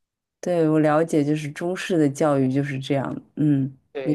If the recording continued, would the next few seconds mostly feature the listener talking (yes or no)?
yes